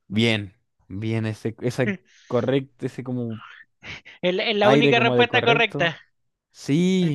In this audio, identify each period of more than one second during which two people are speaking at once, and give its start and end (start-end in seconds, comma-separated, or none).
4.6-5.9